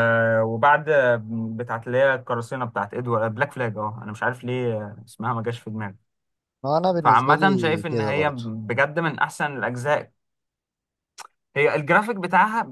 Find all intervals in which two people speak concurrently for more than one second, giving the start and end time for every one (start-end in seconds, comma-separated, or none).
7.0-8.4